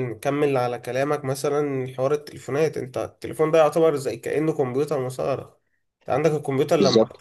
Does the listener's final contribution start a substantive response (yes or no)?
no